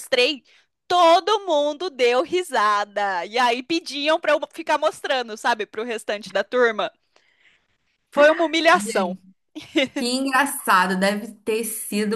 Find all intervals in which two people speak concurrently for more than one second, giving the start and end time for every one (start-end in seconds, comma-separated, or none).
none